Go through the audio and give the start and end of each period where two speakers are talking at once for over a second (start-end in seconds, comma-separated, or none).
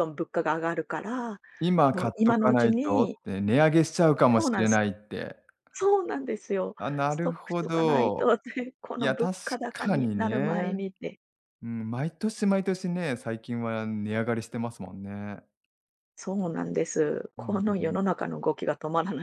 1.9-3.2, 6.8-8.3, 9.0-10.9